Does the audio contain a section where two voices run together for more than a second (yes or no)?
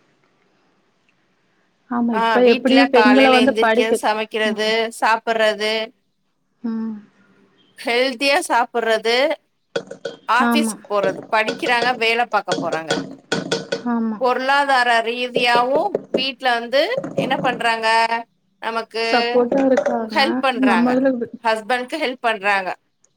yes